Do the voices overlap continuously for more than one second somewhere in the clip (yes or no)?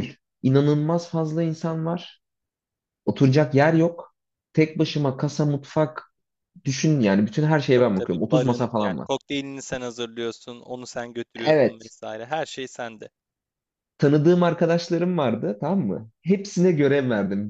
yes